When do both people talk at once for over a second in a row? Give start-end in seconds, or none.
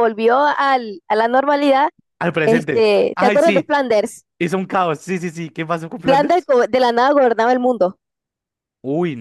2.4-3.7